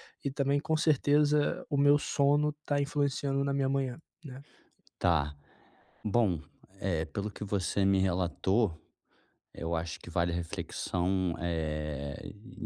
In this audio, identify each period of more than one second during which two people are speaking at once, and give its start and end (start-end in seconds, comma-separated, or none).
none